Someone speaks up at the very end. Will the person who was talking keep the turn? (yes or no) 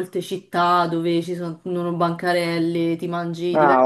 no